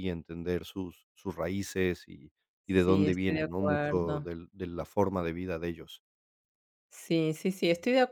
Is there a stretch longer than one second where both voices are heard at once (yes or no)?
yes